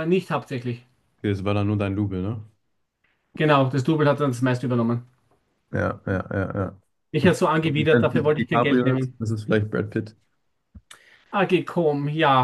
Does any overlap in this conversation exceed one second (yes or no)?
yes